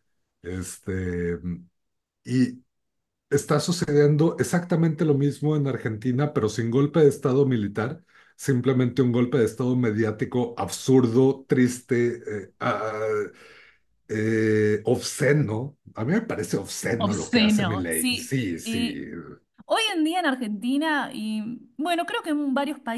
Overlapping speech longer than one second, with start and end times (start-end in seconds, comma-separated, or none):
17.0-19.0